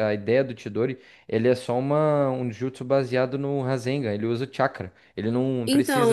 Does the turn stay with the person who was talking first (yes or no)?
no